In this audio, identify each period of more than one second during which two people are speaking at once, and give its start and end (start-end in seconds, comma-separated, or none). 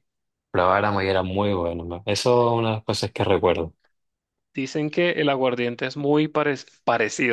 none